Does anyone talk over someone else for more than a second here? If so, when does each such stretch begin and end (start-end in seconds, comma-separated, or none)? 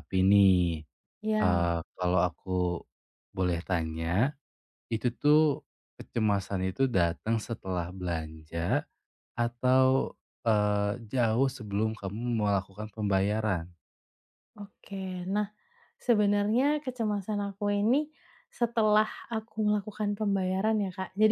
none